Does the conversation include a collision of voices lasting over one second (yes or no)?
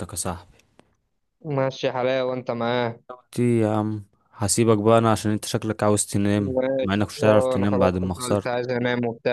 yes